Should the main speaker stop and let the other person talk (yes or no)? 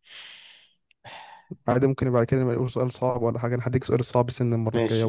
yes